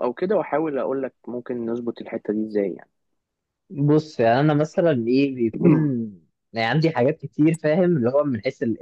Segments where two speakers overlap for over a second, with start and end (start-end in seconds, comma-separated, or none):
none